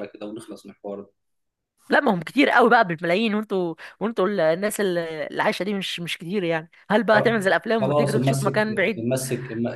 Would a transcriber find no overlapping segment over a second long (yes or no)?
no